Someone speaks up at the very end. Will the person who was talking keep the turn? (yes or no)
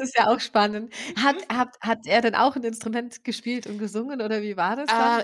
no